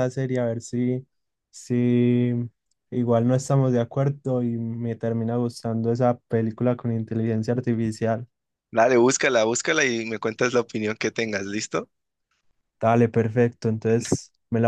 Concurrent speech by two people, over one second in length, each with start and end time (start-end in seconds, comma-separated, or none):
none